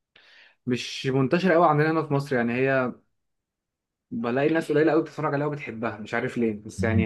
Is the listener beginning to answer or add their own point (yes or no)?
yes